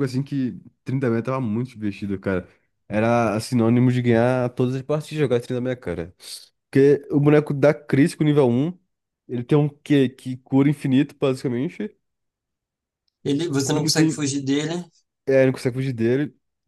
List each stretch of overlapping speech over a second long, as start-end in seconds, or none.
none